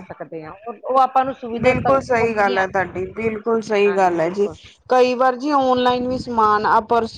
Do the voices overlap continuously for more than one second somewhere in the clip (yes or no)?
no